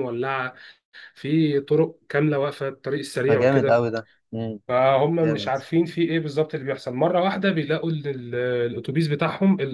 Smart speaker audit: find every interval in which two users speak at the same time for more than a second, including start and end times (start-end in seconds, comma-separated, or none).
none